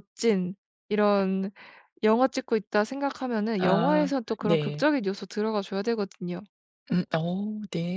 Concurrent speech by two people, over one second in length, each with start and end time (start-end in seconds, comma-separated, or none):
3.6-4.9